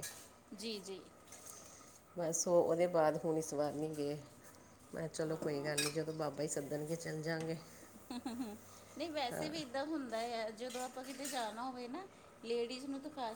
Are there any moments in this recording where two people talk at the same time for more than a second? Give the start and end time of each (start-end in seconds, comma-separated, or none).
none